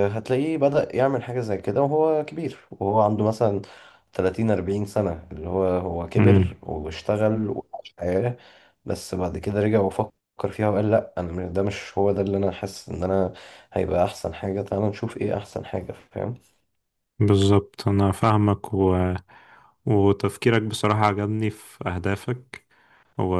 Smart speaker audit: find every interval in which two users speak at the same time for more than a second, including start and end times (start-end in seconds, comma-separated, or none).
none